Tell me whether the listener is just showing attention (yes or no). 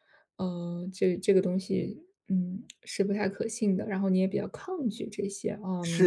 no